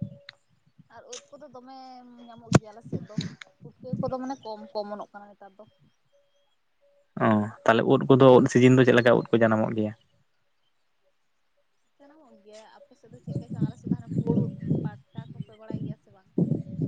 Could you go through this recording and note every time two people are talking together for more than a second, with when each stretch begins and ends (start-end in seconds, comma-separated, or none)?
none